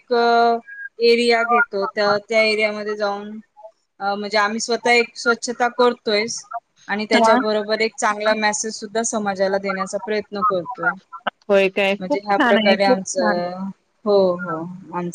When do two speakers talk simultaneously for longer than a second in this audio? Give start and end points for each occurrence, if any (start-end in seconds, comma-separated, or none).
12.0-13.4